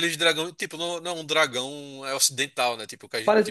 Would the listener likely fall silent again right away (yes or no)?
no